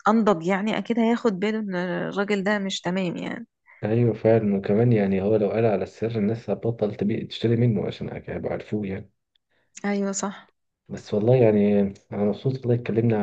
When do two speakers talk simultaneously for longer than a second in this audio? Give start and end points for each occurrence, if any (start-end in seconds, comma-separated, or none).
none